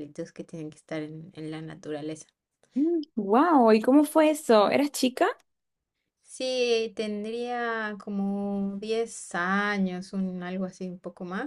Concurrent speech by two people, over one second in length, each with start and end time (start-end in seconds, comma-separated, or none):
none